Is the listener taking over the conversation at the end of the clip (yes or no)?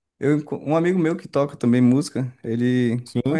no